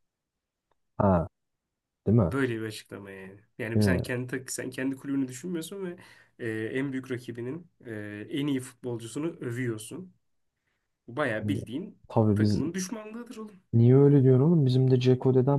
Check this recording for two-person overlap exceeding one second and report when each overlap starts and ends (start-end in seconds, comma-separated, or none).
none